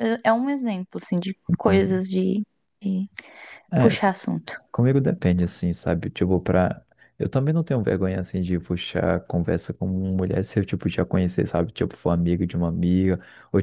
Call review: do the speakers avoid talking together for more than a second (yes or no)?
yes